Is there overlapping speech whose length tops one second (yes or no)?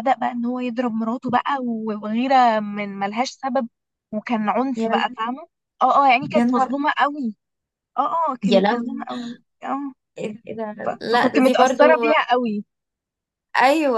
yes